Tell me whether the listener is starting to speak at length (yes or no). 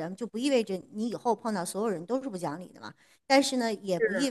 no